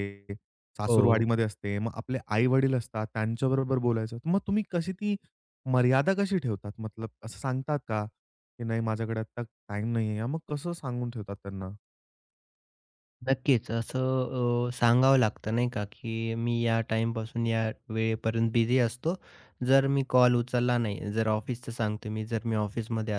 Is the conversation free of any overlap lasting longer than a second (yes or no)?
yes